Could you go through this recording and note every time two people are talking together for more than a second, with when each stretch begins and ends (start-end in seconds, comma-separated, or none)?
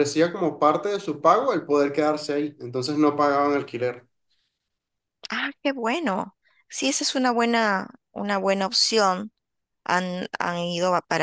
none